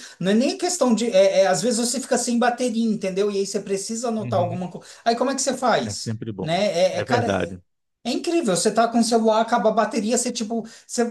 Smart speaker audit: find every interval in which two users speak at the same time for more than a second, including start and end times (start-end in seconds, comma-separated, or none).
5.8-7.5